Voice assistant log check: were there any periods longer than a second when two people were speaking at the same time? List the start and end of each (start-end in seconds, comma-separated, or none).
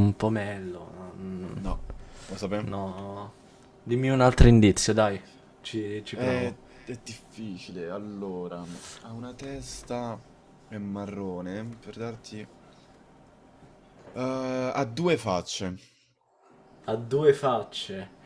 none